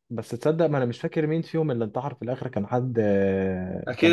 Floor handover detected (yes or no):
yes